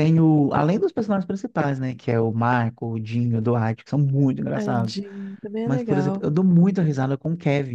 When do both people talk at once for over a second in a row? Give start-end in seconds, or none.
none